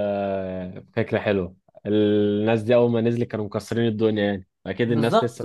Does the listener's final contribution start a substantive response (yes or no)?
yes